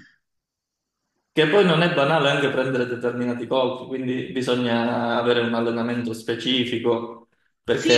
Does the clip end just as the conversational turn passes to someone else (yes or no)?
yes